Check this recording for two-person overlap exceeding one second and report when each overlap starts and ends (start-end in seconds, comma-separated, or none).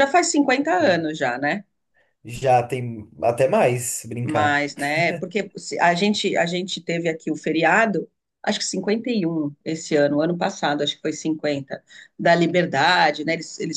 none